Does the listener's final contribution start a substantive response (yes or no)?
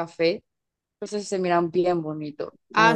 yes